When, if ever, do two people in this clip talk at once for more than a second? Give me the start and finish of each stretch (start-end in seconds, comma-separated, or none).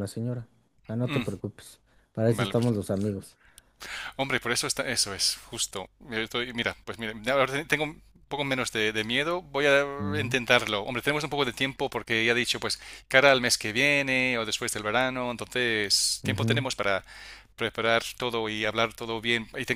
none